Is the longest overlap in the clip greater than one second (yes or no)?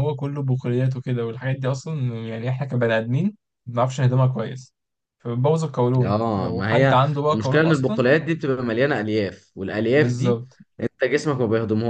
yes